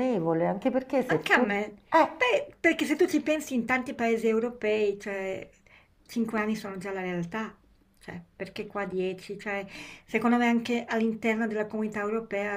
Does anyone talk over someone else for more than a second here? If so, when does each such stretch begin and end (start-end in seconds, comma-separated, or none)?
none